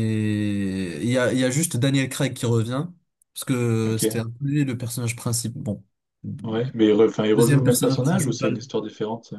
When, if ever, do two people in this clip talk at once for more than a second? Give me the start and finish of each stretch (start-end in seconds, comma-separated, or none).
7.3-8.6